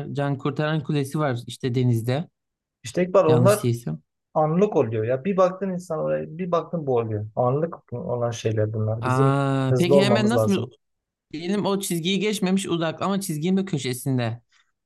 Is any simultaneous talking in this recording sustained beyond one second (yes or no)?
yes